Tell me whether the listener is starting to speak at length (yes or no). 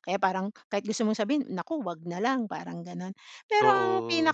no